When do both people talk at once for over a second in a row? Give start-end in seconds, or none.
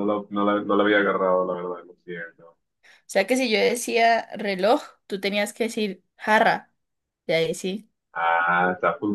none